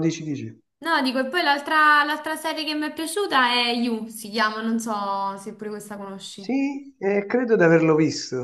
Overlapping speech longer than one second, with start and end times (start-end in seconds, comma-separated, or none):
none